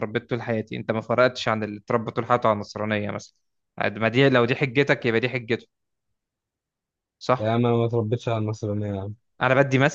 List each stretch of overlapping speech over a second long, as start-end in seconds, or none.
none